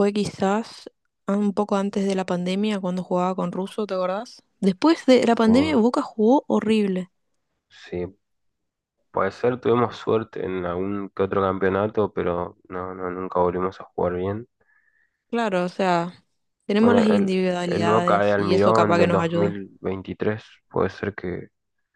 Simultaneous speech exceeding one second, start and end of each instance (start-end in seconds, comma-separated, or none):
16.8-19.6